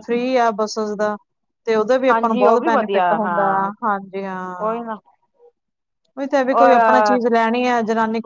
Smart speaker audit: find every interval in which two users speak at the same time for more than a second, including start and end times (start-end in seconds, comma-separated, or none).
2.1-3.7